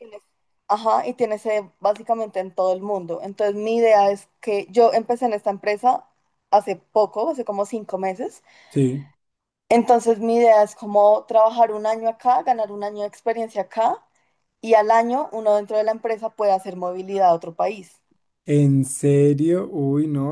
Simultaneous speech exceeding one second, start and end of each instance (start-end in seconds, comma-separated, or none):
none